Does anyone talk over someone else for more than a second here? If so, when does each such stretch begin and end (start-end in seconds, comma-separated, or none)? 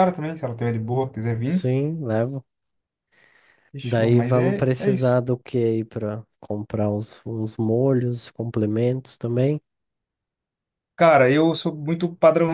3.8-5.2